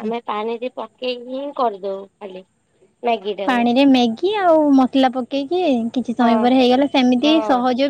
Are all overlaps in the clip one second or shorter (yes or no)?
yes